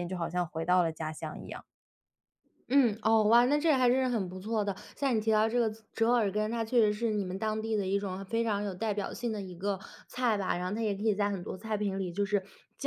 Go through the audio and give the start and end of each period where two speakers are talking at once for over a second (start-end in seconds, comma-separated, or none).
none